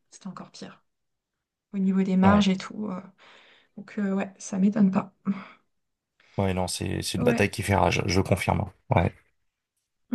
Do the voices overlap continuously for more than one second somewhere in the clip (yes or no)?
no